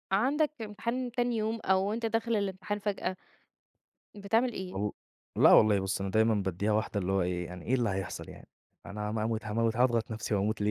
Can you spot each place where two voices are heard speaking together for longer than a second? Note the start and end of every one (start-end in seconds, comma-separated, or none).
none